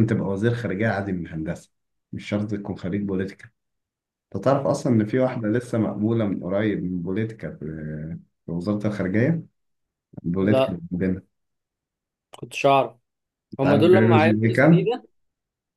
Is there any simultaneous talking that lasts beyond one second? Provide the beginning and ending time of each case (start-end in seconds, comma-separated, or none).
13.6-14.9